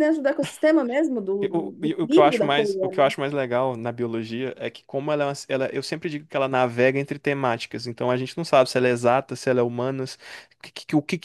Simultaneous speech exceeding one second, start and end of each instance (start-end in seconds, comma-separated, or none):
1.4-2.7